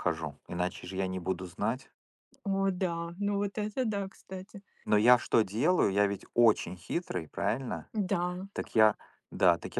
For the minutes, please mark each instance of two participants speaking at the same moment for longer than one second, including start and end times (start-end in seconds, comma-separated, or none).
none